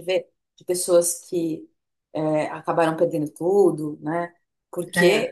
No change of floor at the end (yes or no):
yes